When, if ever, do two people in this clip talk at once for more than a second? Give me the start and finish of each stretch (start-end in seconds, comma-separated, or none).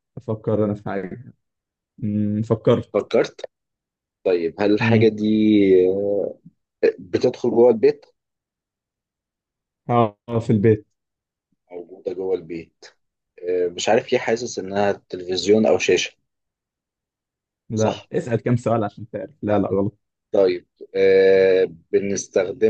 none